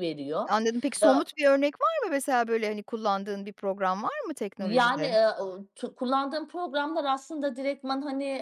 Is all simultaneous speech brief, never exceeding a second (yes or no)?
yes